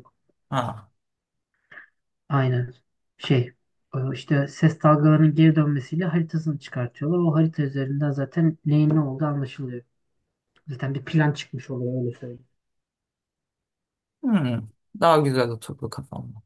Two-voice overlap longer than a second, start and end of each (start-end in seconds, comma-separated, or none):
none